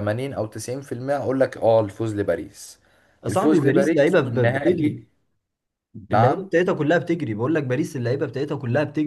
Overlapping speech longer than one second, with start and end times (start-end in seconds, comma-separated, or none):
3.3-5.0